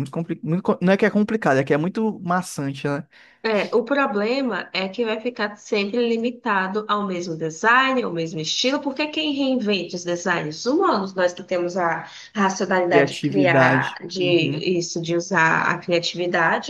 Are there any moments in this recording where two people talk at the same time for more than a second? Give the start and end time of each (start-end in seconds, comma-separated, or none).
12.9-14.6